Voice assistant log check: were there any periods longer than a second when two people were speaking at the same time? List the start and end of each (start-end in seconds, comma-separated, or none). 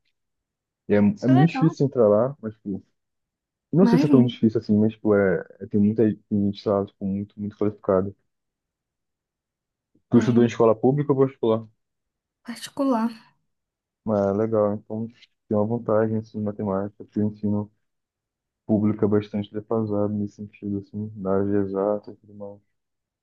none